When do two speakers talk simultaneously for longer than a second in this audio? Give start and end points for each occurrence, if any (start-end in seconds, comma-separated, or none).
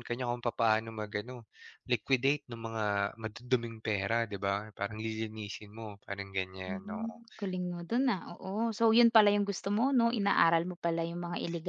none